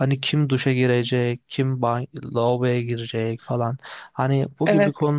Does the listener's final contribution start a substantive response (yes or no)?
no